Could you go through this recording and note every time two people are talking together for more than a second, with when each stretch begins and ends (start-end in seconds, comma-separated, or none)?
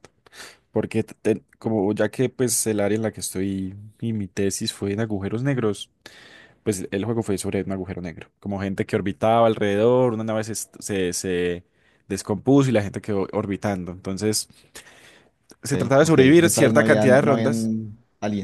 15.7-17.7